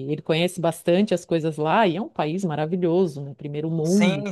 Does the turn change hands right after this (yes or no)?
yes